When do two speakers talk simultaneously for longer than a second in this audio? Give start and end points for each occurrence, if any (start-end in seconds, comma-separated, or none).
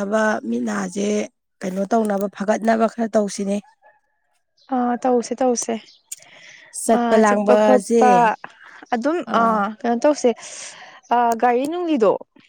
none